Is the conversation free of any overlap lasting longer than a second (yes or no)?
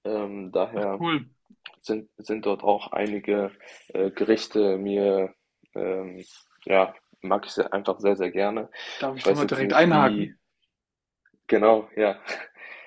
no